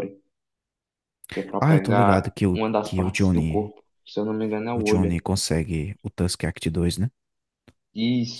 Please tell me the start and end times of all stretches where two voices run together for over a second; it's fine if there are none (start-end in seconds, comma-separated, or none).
1.6-3.7